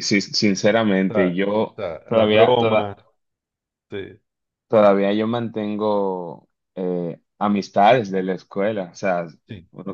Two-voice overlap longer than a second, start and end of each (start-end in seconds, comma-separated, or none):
1.1-2.9